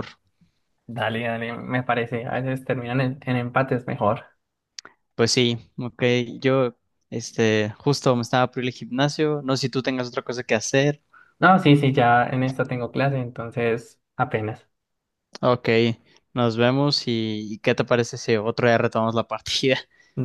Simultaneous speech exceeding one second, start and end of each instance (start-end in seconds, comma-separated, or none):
none